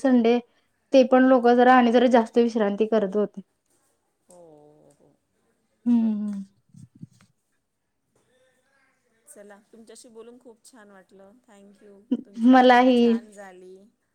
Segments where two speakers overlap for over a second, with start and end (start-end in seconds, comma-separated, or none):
none